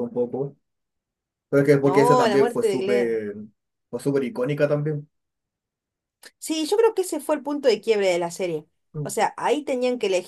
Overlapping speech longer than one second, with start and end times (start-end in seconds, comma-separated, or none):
1.8-3.2